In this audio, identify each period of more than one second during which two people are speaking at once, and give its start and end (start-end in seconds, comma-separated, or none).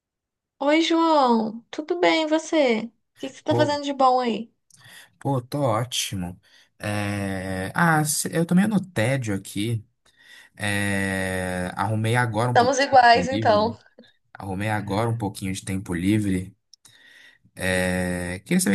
12.5-13.8